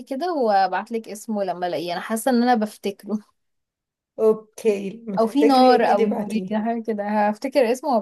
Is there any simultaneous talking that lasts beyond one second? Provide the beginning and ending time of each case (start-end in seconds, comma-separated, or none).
5.2-6.6